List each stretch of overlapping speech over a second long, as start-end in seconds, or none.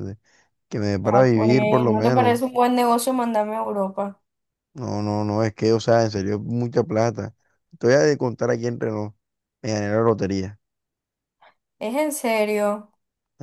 1.0-2.4